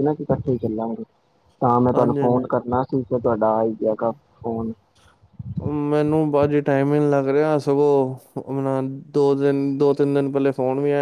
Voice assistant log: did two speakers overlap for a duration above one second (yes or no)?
no